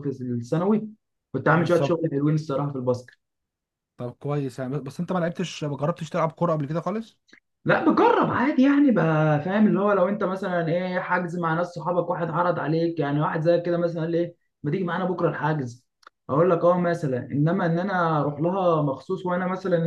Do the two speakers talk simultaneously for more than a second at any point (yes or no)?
no